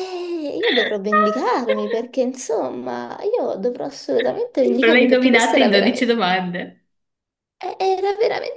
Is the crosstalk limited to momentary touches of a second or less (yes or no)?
no